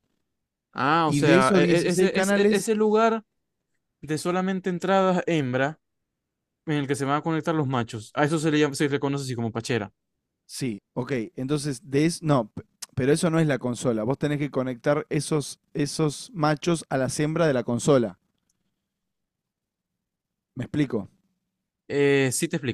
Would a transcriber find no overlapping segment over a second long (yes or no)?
no